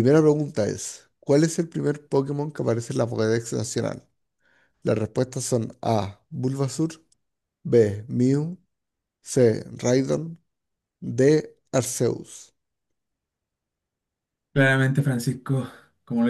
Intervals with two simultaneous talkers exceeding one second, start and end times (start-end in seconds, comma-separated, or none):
none